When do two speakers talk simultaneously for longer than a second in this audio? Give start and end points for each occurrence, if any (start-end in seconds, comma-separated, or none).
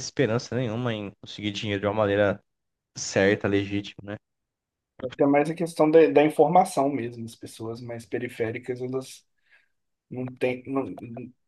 none